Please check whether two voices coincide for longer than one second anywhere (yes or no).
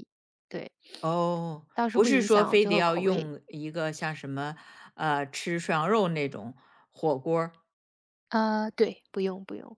yes